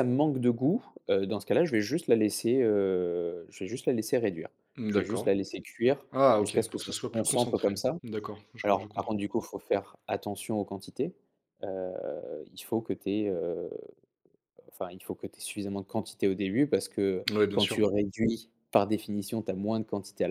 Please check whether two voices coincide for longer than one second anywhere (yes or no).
yes